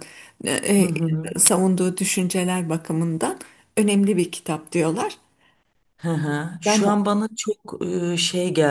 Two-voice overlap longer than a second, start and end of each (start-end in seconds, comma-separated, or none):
none